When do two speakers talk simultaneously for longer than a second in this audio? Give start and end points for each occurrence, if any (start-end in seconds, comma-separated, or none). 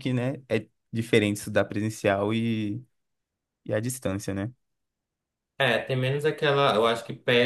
none